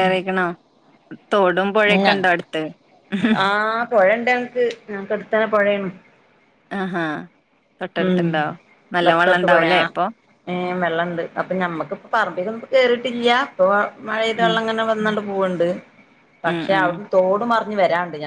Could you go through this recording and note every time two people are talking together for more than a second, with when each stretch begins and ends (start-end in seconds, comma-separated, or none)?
none